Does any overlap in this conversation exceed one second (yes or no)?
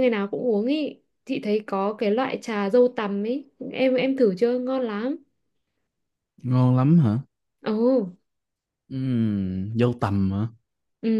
no